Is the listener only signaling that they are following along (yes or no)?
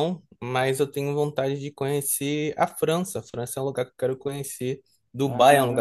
yes